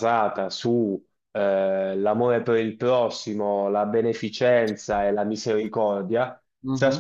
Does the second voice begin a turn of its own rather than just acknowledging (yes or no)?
no